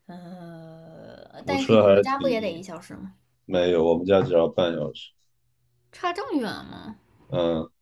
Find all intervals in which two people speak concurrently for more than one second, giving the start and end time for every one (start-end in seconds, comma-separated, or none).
1.4-2.6